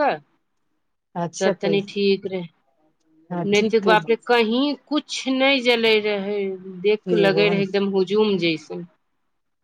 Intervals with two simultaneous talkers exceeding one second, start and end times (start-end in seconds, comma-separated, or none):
none